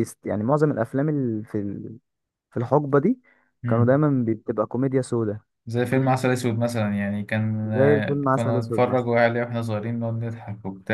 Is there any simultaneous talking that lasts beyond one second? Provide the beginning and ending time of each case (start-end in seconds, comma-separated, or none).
7.6-9.1